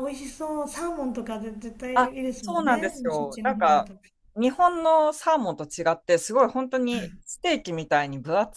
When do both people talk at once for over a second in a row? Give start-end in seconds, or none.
1.9-3.9